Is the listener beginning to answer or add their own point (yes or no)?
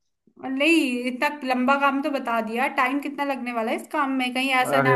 no